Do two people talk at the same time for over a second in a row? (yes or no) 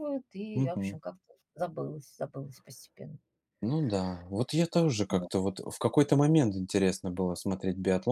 no